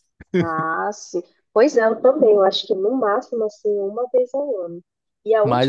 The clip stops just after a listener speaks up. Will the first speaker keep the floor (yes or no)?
yes